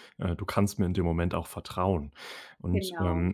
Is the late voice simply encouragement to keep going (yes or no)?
yes